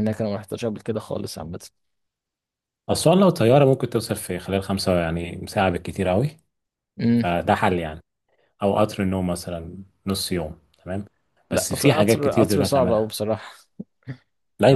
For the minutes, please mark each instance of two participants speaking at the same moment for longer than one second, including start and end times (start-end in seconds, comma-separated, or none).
11.5-13.1